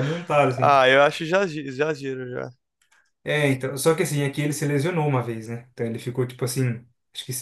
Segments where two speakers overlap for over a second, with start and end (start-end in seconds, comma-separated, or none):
none